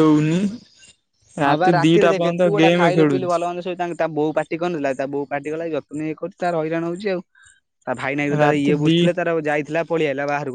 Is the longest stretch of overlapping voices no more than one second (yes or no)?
no